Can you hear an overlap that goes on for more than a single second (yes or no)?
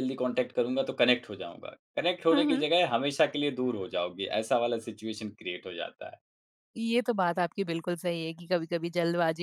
no